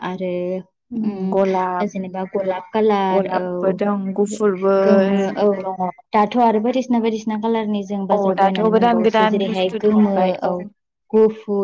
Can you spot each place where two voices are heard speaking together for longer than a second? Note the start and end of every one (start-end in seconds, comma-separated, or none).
8.1-10.3